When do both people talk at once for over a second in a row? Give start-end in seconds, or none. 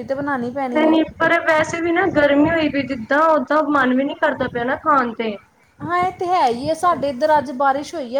none